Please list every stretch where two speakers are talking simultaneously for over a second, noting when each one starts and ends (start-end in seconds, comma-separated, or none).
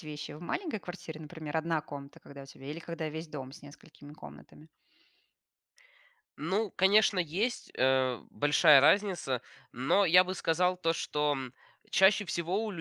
none